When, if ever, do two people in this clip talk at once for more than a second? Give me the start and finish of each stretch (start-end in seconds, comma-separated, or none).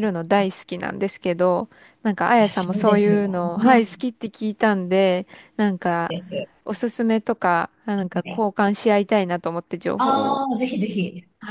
2.4-4.0